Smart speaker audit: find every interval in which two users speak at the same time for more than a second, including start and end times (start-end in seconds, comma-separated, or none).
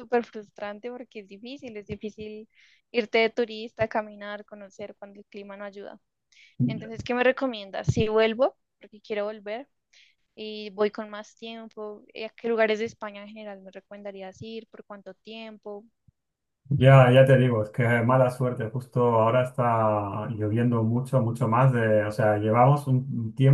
none